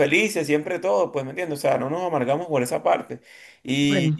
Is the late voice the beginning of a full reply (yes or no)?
no